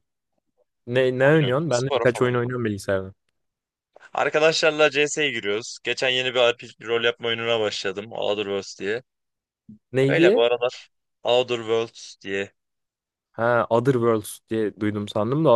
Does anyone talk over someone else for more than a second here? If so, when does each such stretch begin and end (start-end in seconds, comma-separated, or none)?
1.2-2.6